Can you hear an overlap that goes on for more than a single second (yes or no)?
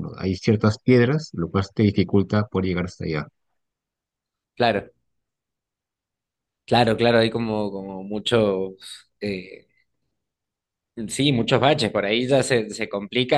no